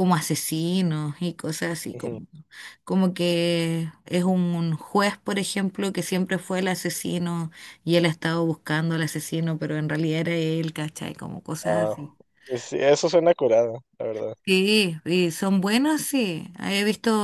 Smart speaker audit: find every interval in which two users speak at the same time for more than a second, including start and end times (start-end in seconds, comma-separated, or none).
none